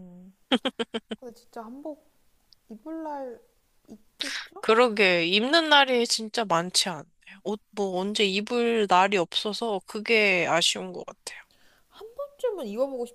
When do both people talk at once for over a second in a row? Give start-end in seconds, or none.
none